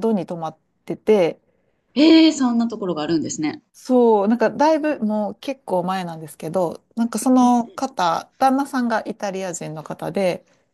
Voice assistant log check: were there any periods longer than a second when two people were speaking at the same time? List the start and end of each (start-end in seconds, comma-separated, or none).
none